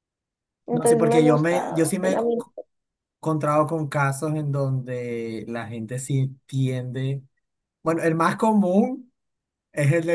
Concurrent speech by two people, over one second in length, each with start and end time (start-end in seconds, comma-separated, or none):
0.7-2.2